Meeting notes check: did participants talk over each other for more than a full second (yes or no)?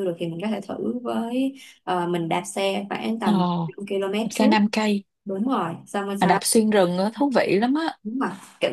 no